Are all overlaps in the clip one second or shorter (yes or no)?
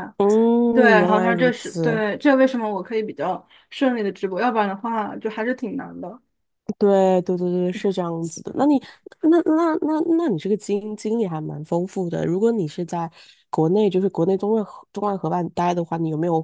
no